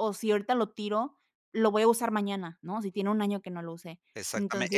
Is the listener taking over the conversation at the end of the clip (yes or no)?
yes